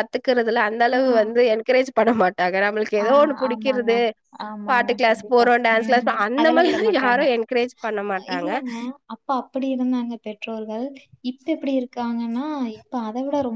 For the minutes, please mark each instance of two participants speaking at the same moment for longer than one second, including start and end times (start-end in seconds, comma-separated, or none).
4.7-7.2